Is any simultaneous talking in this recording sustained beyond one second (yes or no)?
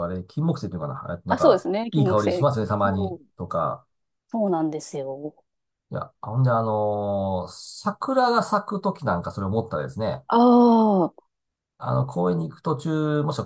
yes